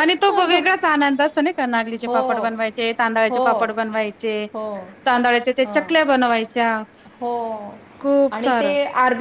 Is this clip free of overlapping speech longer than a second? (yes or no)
yes